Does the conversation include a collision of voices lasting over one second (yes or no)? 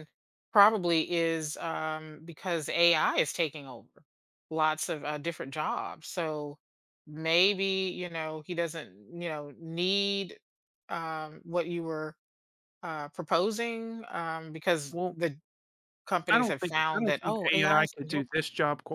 yes